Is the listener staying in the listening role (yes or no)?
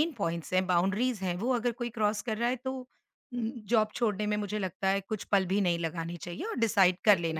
yes